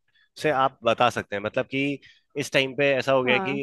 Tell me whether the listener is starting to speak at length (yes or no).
no